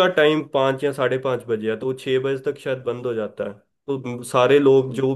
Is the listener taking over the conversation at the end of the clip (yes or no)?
no